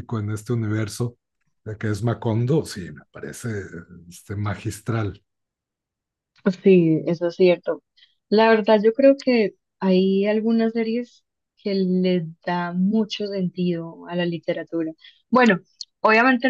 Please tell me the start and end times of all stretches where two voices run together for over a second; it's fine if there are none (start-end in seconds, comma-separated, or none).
none